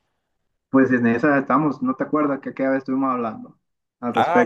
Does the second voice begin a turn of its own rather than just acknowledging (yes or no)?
yes